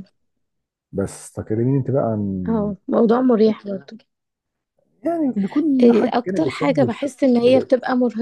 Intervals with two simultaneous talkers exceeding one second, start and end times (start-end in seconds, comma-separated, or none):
5.8-7.7